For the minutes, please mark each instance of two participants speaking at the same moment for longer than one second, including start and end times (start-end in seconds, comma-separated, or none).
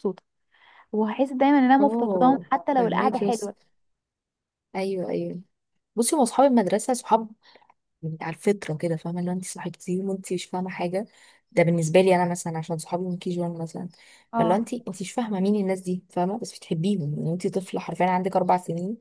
1.8-3.5